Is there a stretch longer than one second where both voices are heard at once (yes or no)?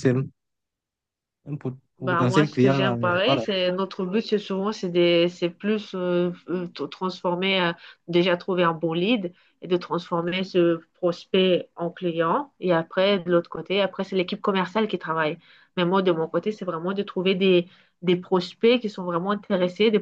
yes